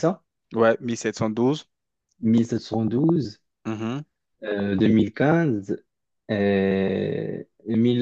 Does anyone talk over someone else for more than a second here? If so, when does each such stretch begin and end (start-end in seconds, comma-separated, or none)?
none